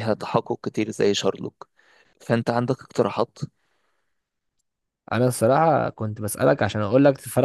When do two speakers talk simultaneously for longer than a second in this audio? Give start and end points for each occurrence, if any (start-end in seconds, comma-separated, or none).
none